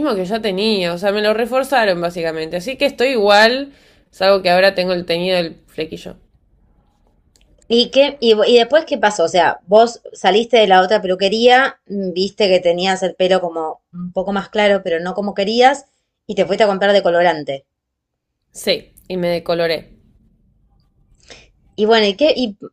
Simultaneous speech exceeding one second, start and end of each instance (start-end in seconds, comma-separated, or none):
none